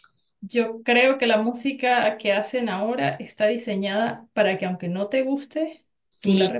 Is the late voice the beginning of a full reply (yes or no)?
yes